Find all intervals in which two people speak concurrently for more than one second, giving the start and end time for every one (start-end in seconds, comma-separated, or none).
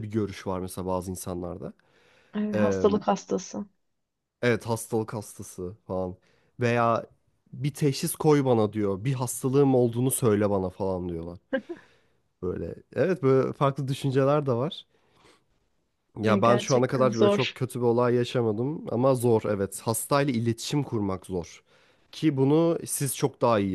16.2-17.6